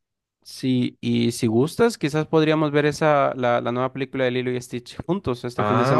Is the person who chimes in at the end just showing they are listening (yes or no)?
no